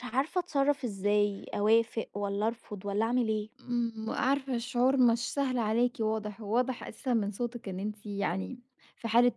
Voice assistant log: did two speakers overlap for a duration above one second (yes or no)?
no